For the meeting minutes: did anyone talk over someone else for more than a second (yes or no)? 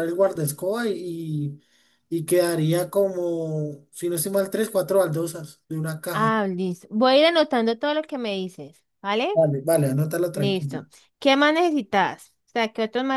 no